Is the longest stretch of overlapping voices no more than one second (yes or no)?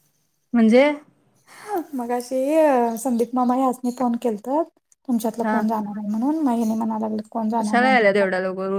yes